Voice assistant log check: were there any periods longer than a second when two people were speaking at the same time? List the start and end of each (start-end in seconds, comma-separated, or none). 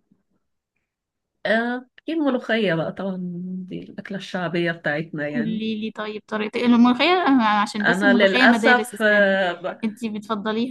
7.8-9.4